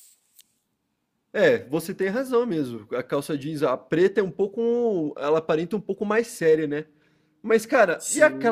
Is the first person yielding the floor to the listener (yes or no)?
no